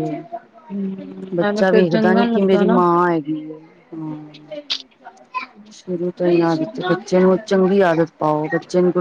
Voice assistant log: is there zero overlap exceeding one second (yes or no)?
no